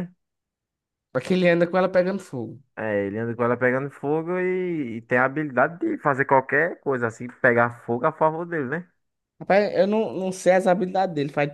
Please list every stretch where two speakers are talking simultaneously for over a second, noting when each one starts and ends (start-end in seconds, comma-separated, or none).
none